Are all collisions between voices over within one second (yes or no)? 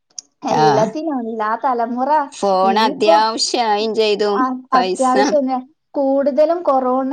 yes